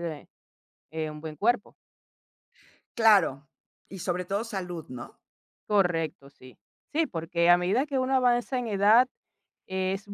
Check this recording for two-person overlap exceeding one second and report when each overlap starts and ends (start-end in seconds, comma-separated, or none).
none